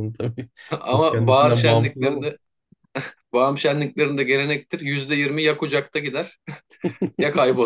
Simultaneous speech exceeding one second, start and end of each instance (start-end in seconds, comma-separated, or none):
0.9-2.2